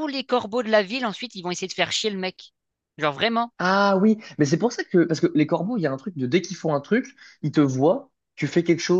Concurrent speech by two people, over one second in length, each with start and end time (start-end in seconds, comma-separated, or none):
none